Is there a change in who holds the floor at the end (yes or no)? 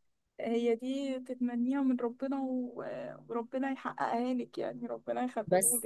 yes